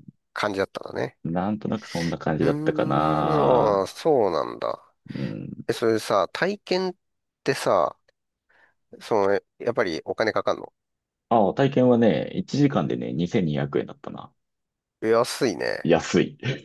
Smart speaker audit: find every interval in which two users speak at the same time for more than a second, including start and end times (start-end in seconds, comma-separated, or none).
2.4-3.9